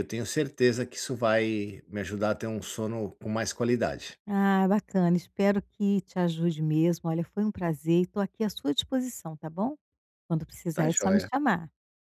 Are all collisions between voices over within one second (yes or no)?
yes